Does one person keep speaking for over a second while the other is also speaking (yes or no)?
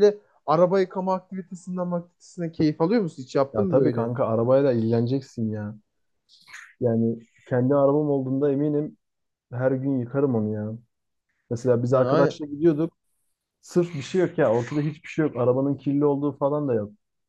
no